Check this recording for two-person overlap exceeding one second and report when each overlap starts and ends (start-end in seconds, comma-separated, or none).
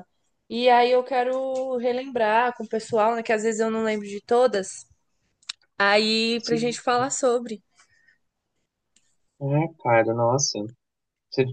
none